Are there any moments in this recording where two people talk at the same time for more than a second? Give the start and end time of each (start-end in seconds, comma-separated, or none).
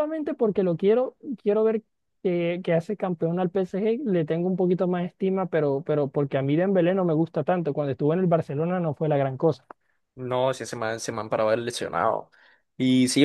none